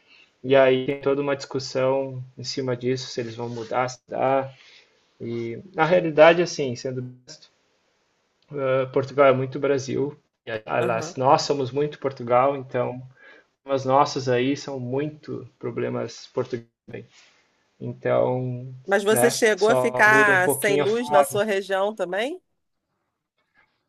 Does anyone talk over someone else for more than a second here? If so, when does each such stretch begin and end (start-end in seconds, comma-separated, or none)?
19.1-20.9